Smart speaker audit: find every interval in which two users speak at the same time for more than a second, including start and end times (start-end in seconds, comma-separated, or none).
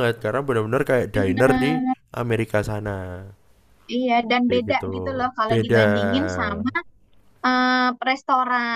none